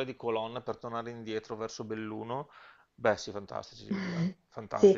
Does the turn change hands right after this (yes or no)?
yes